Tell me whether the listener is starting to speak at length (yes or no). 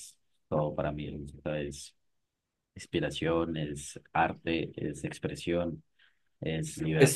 yes